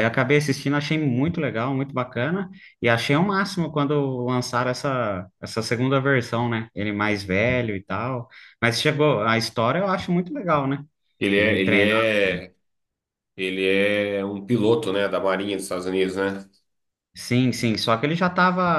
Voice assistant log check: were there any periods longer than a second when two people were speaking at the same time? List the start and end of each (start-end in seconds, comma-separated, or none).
none